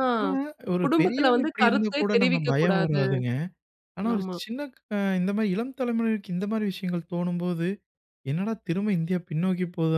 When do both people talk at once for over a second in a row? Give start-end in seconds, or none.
0.8-3.0